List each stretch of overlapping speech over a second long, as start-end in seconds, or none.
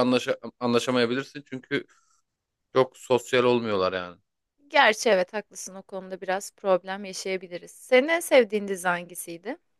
none